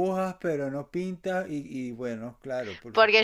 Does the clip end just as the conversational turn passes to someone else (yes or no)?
yes